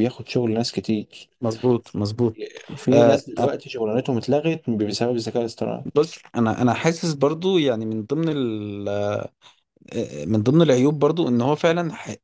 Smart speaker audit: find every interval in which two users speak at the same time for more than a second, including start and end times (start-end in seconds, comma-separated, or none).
none